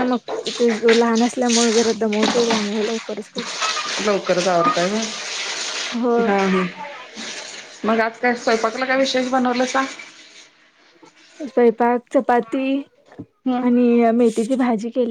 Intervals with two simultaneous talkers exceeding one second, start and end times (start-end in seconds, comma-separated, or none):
none